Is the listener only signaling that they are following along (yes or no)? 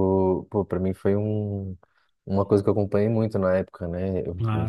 yes